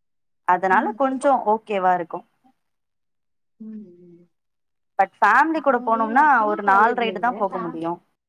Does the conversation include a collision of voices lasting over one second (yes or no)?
yes